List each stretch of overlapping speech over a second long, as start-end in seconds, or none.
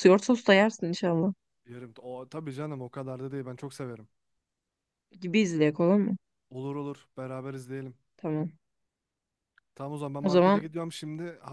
none